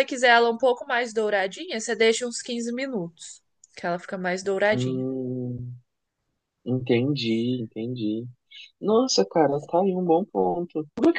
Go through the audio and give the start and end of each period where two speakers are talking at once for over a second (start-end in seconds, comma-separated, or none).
none